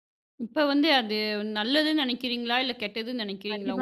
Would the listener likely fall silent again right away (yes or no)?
no